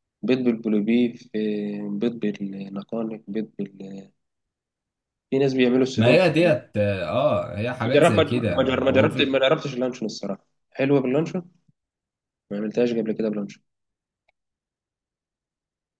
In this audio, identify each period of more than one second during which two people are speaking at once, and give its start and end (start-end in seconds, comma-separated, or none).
7.9-9.4